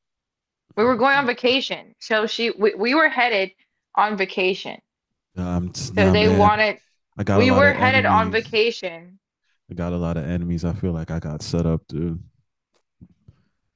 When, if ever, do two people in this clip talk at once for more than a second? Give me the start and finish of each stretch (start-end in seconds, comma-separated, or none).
7.3-8.6